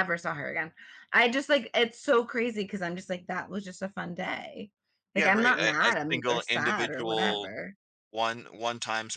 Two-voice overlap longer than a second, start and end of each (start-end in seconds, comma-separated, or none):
5.2-7.5